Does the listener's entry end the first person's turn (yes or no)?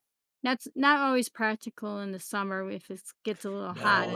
yes